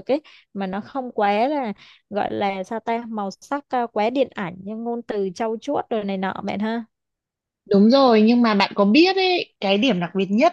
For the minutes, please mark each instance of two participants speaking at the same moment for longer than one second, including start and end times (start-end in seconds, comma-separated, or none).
none